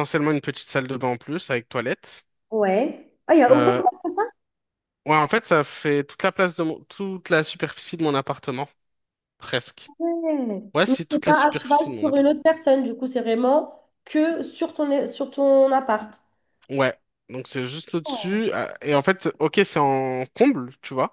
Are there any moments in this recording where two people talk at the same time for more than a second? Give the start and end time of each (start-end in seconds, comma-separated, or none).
10.7-12.2